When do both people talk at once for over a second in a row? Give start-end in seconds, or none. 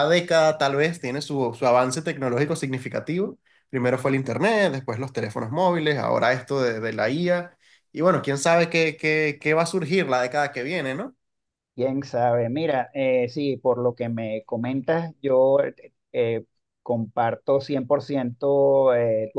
none